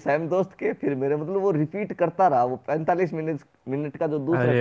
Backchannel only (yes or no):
no